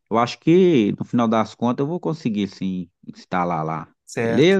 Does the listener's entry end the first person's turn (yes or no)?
yes